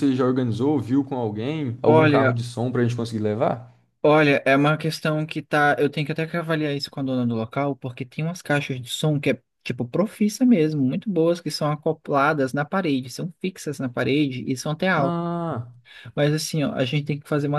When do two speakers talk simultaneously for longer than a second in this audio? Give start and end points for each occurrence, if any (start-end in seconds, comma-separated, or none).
none